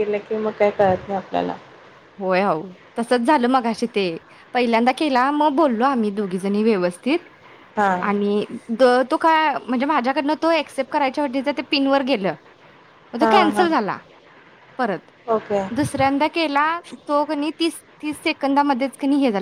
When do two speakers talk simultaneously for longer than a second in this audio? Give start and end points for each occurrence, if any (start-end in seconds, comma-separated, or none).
none